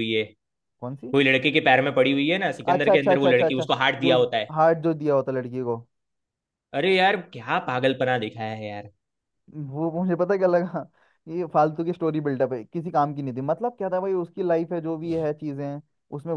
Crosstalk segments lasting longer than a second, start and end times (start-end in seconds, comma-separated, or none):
2.7-4.2